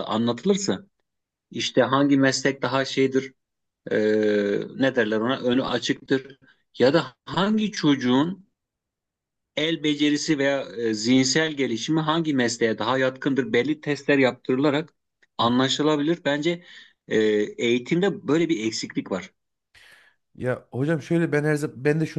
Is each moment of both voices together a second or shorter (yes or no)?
yes